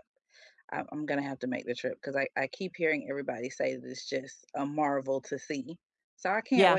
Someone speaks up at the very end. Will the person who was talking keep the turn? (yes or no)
yes